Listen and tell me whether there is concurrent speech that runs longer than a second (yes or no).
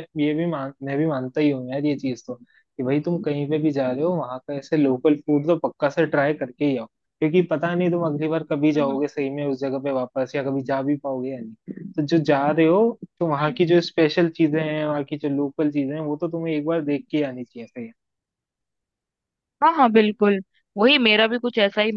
no